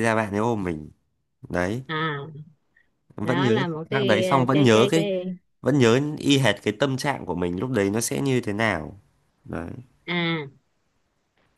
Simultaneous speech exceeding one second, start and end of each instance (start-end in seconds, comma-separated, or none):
3.2-5.1